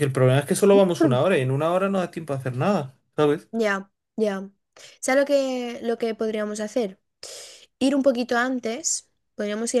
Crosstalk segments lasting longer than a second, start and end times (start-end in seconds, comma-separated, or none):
none